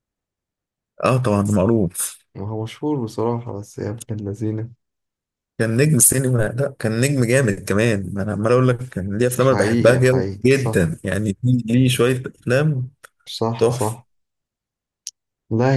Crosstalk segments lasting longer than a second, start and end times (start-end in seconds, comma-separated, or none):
9.4-10.8